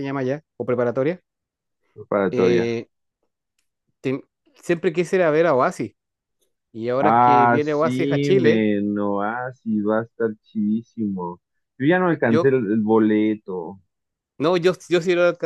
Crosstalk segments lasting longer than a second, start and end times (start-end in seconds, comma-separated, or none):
7.0-8.7